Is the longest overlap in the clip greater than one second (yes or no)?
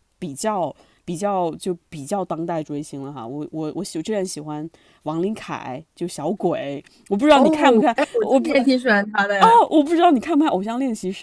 yes